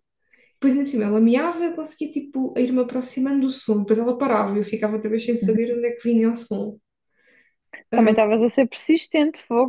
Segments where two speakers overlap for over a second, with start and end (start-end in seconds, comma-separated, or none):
none